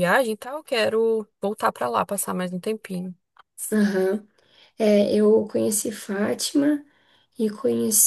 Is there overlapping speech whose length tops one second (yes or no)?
no